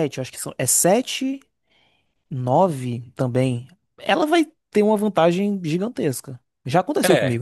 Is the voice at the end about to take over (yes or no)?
yes